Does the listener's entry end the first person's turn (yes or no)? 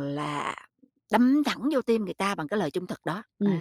yes